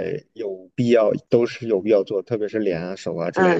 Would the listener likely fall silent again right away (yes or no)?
no